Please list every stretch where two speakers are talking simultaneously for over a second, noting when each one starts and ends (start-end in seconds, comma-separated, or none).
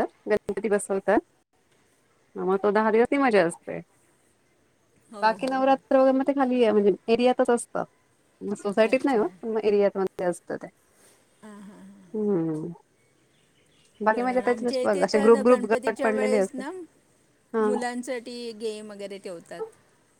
14.1-16.6